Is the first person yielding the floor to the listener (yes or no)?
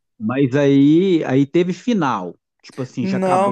yes